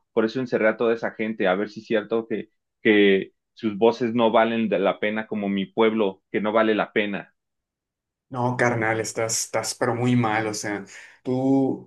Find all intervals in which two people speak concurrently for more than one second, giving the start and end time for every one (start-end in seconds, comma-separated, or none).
none